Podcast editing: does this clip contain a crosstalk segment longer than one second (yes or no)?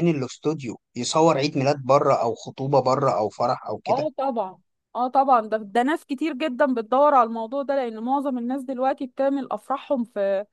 no